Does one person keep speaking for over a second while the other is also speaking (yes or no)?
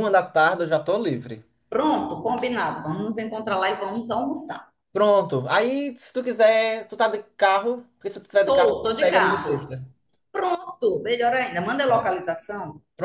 yes